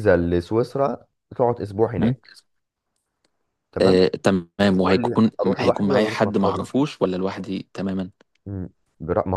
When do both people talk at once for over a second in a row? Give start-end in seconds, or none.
4.8-6.6